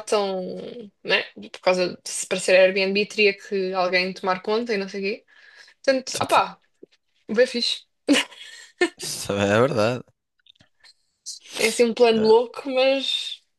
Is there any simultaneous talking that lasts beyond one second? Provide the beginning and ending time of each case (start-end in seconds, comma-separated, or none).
none